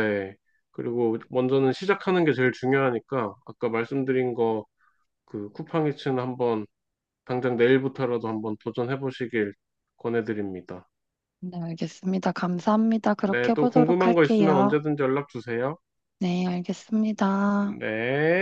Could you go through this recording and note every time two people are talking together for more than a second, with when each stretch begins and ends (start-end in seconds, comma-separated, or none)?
13.2-14.8